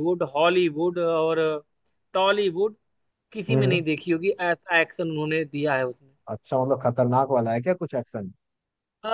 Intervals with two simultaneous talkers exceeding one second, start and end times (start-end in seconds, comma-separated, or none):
none